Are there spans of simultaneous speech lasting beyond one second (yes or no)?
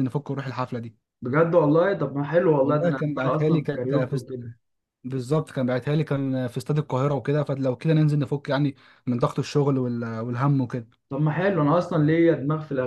yes